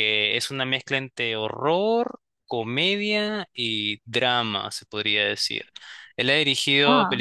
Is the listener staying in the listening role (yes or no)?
yes